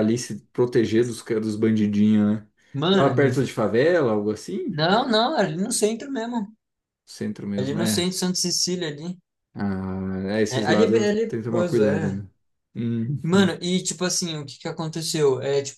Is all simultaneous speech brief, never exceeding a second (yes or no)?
no